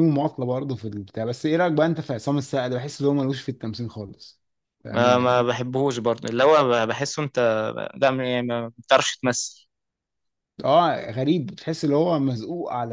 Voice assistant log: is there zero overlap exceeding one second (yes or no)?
yes